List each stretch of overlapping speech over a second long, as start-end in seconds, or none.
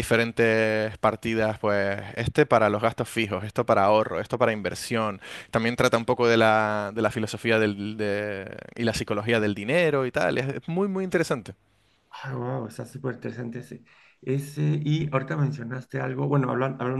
none